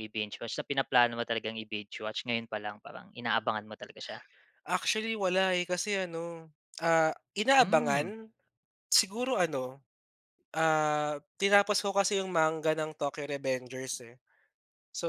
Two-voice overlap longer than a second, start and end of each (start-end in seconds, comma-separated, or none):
none